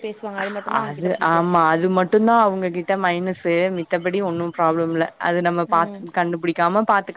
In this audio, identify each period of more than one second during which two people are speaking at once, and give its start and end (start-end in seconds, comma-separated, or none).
none